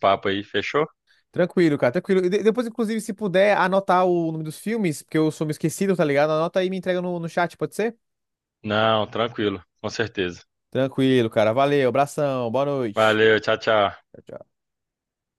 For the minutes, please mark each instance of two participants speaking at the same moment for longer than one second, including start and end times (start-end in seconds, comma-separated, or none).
none